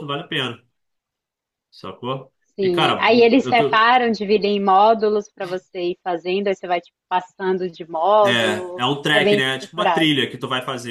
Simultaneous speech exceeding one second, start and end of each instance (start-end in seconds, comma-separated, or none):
2.5-3.9, 8.2-10.1